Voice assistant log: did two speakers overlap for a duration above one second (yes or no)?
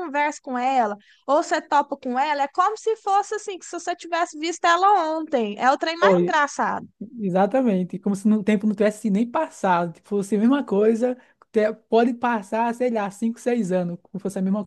no